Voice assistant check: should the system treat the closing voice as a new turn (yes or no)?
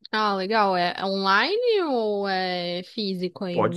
yes